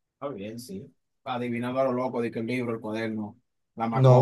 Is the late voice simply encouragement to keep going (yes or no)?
no